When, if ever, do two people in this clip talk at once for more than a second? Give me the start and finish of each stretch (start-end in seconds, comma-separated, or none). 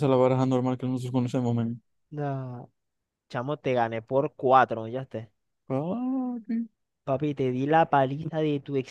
none